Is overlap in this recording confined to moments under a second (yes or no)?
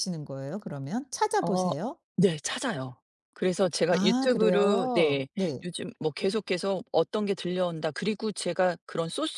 no